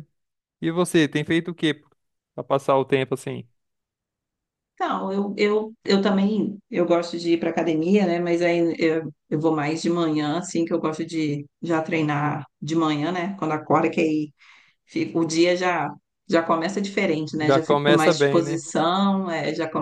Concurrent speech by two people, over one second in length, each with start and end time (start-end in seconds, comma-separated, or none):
17.4-18.6